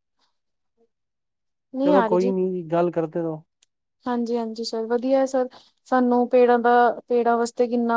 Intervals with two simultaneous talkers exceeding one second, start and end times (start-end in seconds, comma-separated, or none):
none